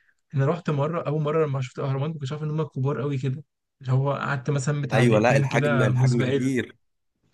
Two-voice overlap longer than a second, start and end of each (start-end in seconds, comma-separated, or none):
4.9-6.5